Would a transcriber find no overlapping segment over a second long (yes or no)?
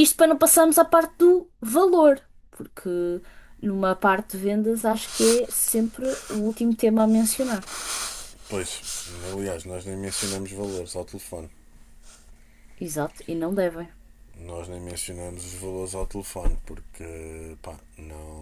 yes